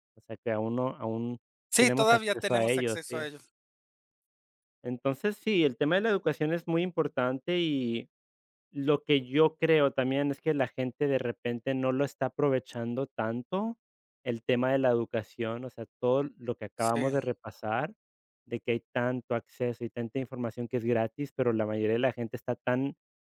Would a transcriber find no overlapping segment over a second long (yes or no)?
no